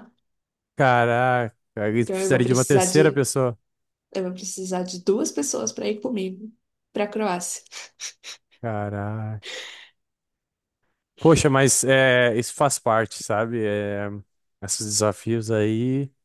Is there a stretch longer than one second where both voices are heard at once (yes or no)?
yes